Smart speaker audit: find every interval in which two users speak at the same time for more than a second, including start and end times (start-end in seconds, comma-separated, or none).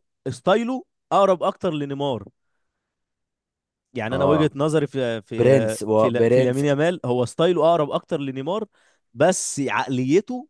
5.4-6.7